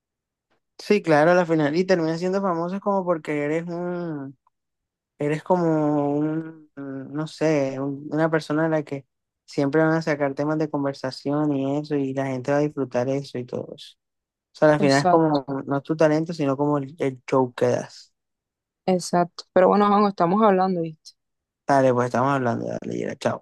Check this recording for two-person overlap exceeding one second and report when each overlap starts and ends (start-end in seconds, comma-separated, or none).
none